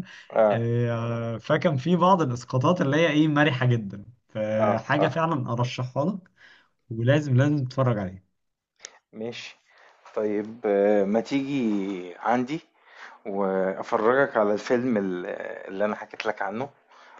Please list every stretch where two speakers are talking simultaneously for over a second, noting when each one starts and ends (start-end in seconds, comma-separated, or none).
none